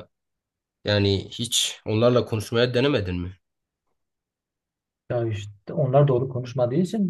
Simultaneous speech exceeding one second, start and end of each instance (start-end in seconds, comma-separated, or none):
none